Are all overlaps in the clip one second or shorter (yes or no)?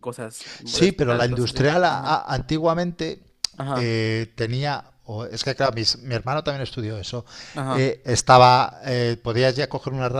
no